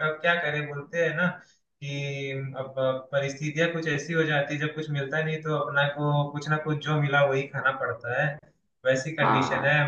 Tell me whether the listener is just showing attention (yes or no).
yes